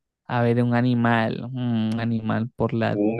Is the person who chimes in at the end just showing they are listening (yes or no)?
no